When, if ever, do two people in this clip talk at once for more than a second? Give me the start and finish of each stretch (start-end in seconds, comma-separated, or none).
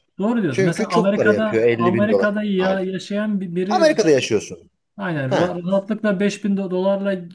0.5-2.9